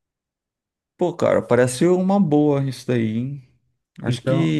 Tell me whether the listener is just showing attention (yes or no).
yes